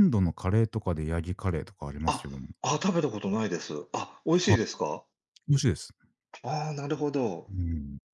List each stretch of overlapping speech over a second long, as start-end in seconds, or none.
none